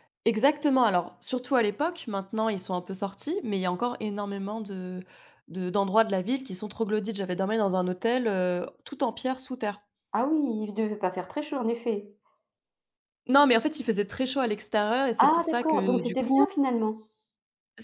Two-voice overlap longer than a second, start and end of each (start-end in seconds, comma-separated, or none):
15.2-16.4